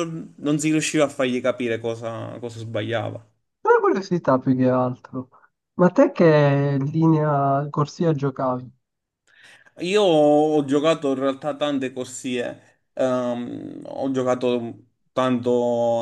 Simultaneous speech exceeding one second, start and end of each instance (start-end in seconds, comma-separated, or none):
none